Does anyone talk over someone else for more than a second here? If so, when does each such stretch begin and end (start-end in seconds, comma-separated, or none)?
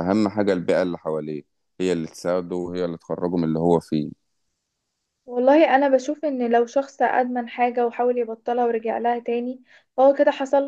none